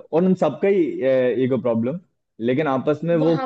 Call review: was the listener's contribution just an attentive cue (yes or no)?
yes